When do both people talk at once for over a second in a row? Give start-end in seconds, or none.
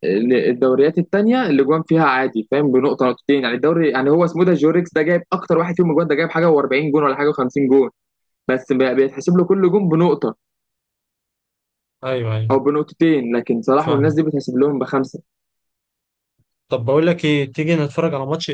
none